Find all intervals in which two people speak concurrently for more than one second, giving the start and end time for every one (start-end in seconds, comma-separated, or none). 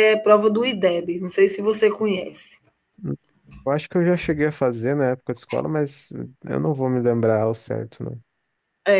none